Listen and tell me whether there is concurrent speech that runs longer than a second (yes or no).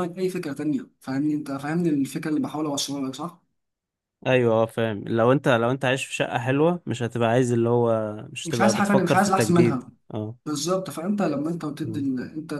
yes